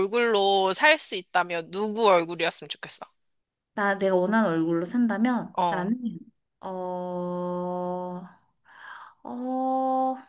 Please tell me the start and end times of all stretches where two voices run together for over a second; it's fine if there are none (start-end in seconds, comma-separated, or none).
none